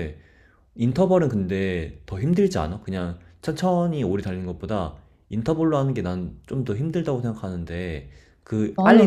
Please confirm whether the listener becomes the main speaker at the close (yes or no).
no